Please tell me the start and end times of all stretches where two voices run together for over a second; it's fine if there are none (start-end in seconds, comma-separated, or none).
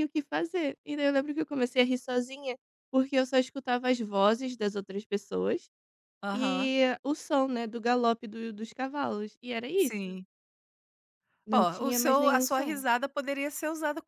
11.5-12.8